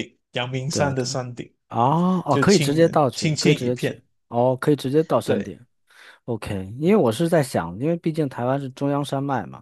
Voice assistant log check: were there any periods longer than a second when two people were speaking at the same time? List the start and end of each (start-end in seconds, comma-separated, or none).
2.3-4.0